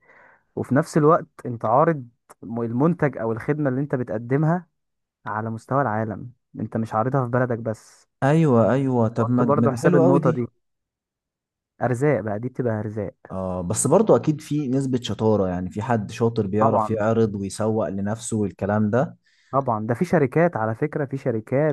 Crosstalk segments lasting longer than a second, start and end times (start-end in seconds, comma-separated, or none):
9.2-10.4